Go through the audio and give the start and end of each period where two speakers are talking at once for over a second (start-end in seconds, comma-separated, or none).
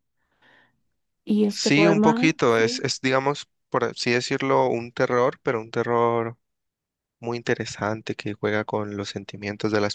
1.5-2.9